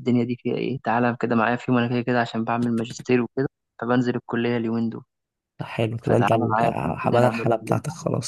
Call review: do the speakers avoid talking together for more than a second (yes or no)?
no